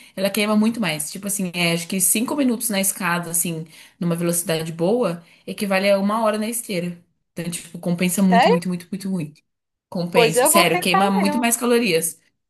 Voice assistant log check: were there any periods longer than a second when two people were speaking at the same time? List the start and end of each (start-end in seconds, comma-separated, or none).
10.1-11.4